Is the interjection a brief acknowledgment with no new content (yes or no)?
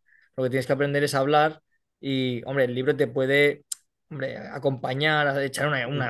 yes